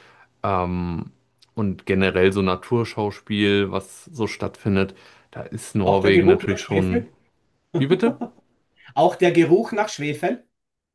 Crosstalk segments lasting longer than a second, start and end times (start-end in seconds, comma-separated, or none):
5.8-7.0